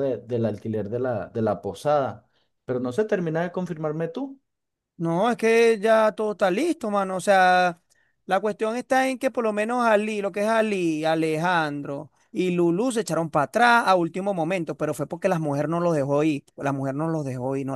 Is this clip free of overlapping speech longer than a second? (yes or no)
yes